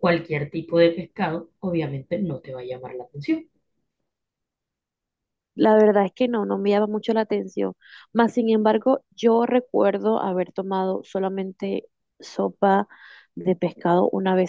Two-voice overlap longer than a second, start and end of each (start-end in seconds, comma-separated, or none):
none